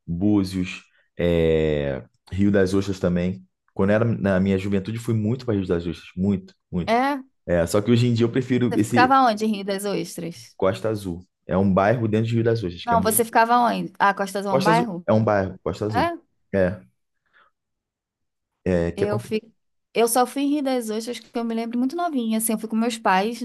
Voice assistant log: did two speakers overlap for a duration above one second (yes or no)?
no